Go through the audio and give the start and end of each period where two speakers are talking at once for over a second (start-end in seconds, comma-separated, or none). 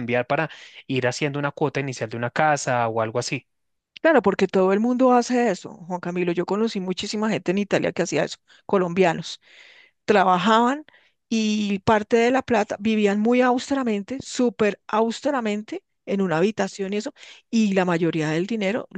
none